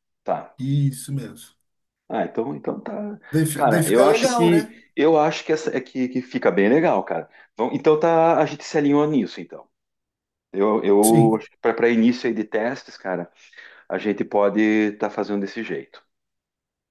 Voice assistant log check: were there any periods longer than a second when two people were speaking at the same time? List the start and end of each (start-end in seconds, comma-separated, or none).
3.3-4.6